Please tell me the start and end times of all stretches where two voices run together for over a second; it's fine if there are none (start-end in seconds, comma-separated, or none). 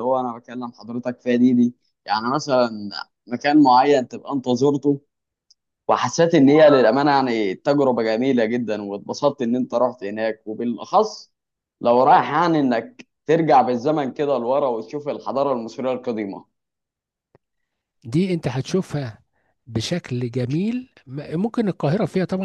none